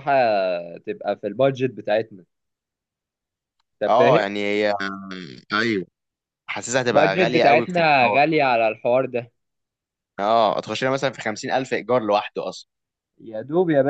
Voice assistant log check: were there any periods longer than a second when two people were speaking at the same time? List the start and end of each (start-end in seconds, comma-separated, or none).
6.9-8.2